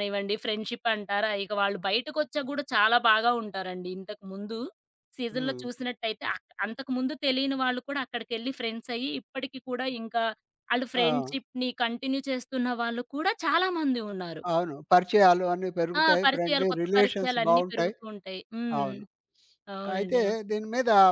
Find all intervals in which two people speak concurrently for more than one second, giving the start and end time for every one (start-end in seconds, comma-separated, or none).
16.0-17.9